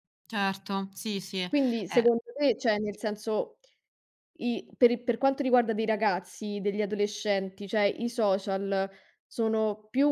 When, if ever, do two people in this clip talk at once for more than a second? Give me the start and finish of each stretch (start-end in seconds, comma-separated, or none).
none